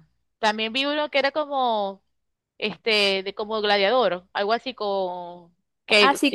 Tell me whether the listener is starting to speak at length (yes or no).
yes